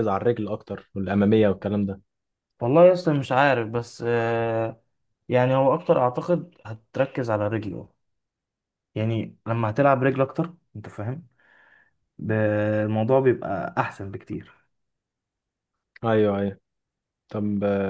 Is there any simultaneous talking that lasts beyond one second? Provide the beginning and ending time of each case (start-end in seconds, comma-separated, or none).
none